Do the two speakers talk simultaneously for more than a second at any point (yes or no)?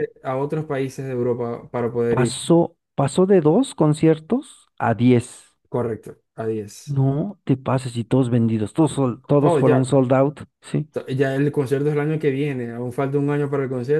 no